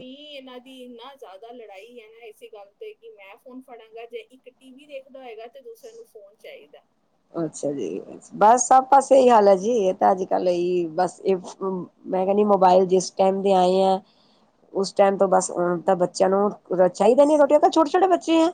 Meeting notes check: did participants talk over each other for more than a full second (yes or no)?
no